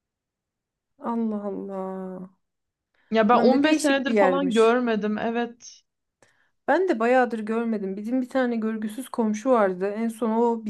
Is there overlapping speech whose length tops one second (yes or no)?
yes